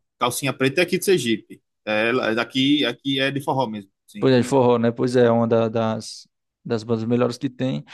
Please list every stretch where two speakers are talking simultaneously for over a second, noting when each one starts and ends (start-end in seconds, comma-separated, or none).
none